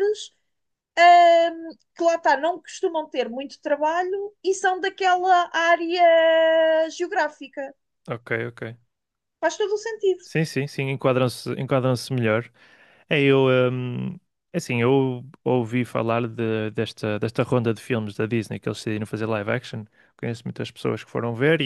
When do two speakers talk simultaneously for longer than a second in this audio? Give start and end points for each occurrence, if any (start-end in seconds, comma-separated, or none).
none